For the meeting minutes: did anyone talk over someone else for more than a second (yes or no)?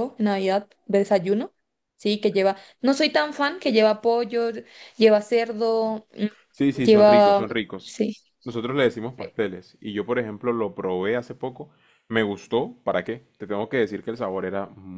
yes